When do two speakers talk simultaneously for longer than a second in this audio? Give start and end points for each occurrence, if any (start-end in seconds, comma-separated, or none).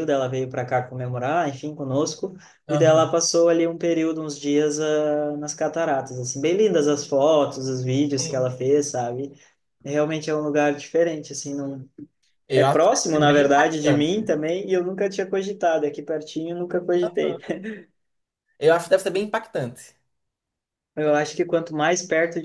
12.6-14.1